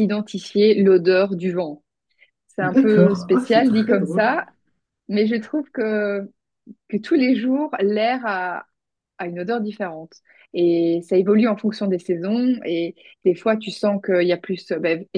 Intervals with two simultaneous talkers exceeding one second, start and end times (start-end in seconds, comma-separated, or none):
2.6-4.4